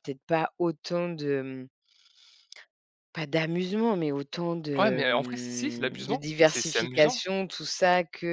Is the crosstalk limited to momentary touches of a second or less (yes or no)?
no